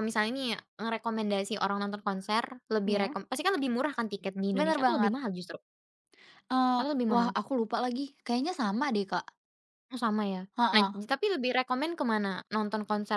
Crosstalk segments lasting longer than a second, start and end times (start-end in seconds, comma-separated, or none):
none